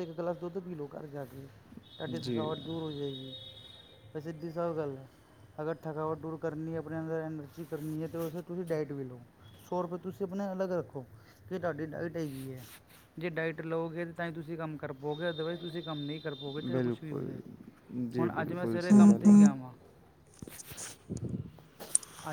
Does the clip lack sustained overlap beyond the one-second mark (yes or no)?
no